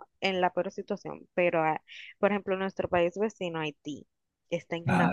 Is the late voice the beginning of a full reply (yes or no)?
no